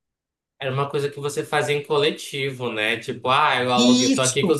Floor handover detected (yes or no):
no